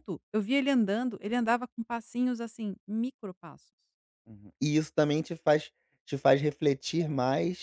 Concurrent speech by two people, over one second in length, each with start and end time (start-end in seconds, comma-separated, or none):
none